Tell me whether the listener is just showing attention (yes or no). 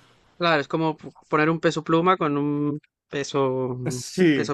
no